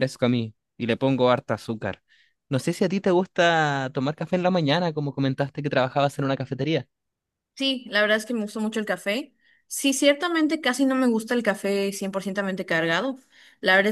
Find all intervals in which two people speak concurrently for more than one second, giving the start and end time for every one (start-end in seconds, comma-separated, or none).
none